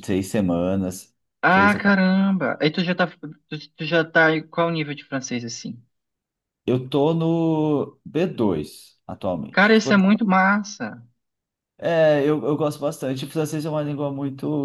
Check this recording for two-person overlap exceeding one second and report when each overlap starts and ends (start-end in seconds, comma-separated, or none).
none